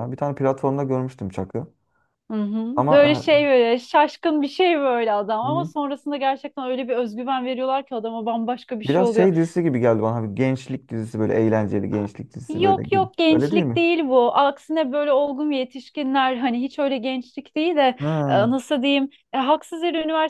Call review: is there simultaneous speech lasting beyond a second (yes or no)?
yes